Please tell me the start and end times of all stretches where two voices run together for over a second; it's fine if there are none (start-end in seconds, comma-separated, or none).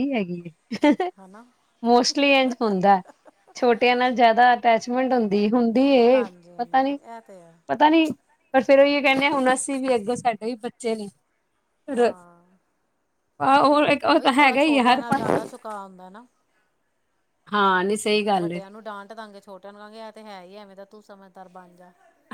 6.0-7.6